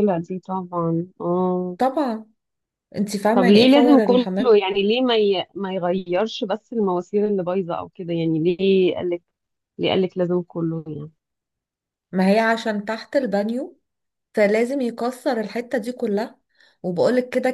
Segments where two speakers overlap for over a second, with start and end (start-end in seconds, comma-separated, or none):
3.3-4.6